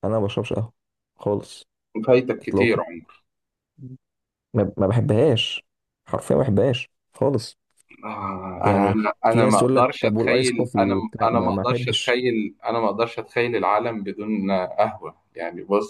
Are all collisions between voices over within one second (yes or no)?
no